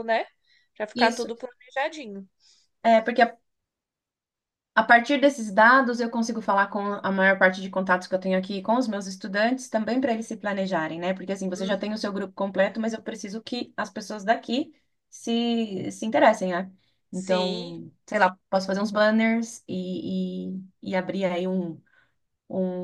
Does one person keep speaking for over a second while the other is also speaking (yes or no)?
no